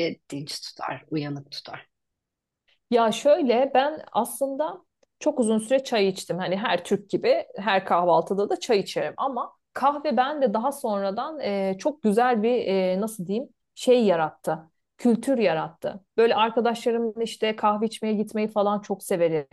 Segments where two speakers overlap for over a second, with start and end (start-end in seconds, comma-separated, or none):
none